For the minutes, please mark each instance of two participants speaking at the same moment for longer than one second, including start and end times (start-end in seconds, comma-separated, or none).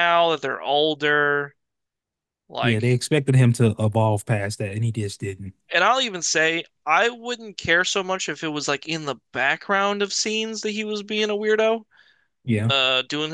none